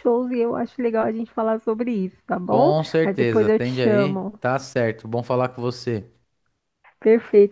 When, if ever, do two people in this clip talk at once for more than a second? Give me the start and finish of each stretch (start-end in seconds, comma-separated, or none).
2.4-4.4